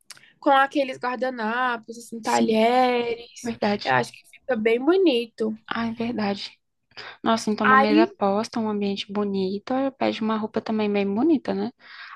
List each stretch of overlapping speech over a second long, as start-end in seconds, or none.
none